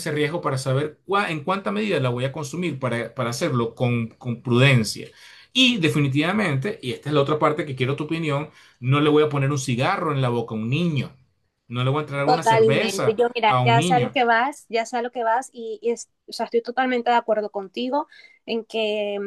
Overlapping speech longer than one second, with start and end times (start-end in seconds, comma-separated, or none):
12.2-14.2